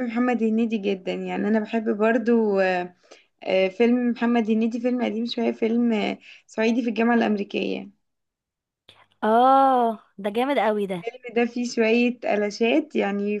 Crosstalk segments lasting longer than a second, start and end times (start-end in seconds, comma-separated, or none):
none